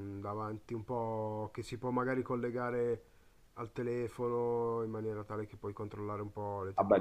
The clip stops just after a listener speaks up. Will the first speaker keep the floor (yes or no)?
no